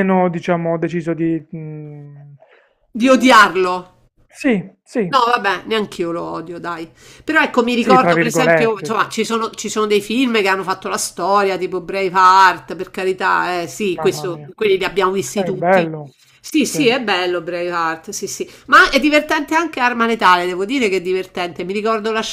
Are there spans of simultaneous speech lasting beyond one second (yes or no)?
yes